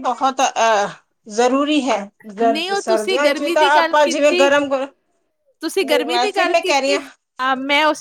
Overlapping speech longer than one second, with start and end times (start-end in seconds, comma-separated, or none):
2.4-4.5